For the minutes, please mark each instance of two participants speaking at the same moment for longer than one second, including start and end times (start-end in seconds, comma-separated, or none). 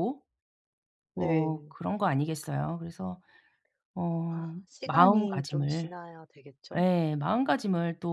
4.3-5.9